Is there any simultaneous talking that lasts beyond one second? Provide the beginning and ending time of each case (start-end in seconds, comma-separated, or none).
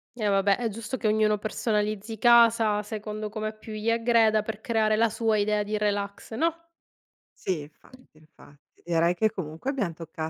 none